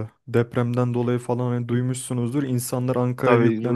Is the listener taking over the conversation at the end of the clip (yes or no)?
yes